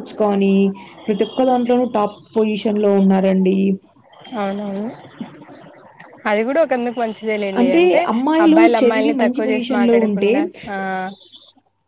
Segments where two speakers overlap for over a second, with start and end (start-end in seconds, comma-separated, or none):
8.4-10.3